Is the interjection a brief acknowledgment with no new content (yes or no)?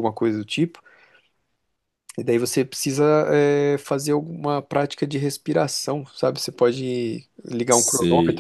no